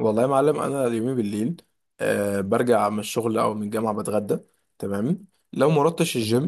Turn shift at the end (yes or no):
no